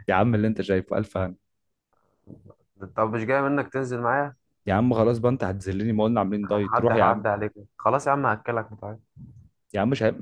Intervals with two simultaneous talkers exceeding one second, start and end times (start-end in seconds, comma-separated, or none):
none